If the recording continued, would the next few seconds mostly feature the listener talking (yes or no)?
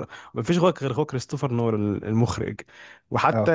no